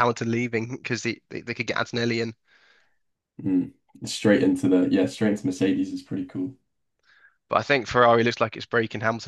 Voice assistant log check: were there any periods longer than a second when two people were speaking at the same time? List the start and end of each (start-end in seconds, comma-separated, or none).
none